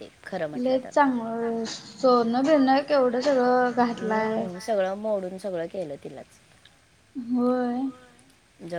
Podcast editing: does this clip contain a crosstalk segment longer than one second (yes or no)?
no